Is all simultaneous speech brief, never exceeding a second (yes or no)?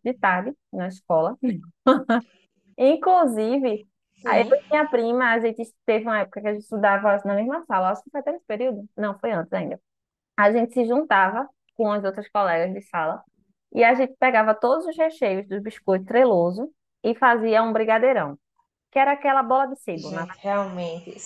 yes